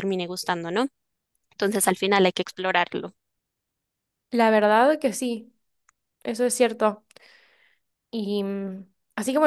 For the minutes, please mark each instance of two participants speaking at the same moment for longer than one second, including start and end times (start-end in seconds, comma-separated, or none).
none